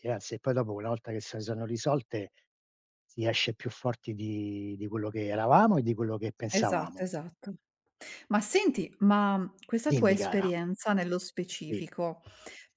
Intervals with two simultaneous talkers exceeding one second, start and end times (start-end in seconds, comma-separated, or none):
none